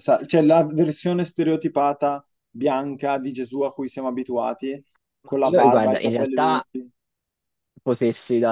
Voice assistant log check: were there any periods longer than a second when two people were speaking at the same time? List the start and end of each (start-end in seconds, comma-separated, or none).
5.2-6.6